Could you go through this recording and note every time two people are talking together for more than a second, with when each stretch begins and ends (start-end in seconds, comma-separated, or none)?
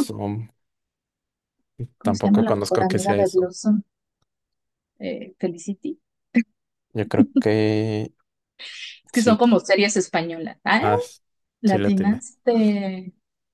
2.0-3.5